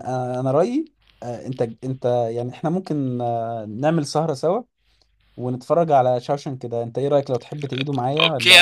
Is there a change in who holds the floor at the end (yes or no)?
yes